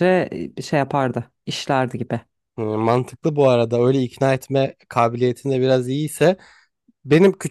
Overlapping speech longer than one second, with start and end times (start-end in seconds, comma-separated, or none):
none